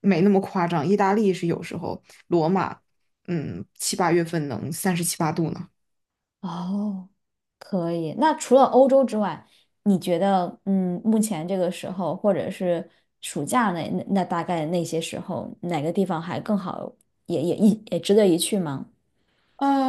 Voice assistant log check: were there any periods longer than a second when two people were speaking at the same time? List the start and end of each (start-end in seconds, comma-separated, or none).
none